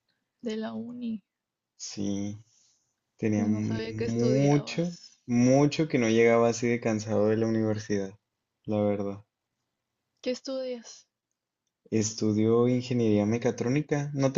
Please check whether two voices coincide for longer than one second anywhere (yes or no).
yes